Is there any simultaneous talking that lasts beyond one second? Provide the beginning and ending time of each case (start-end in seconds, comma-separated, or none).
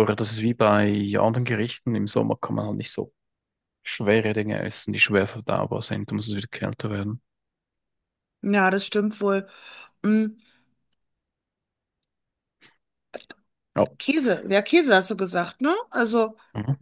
none